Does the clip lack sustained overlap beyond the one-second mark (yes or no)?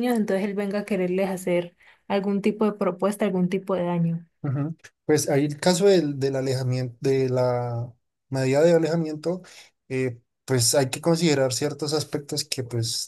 yes